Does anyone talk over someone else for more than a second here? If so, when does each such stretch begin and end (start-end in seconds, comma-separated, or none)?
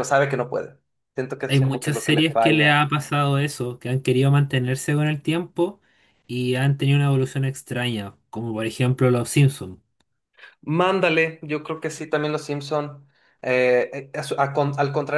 1.5-2.9